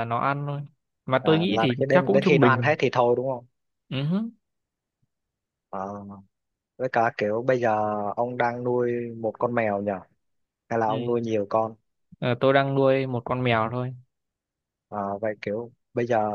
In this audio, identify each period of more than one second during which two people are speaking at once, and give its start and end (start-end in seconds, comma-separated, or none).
1.2-2.8